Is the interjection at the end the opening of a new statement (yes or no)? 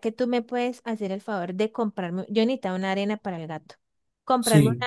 no